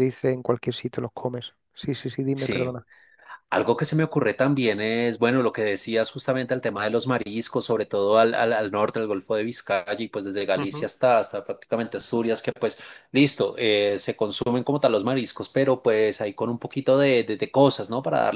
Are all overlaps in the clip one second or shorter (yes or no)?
yes